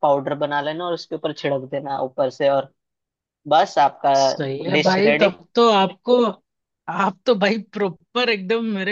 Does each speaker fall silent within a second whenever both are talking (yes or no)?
yes